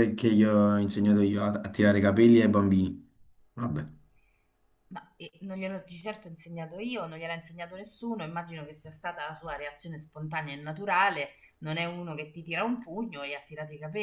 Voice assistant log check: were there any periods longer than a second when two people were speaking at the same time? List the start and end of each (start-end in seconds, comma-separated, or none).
none